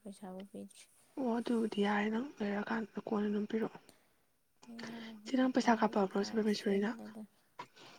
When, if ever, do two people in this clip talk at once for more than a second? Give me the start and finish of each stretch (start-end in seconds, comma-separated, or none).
5.2-6.9